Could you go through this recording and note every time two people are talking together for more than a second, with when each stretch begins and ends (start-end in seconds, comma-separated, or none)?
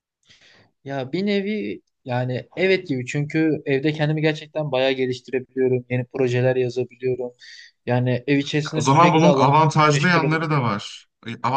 8.8-10.8